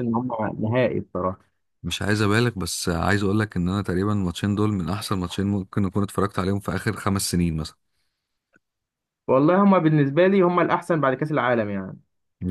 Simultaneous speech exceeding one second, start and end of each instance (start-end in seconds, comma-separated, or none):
none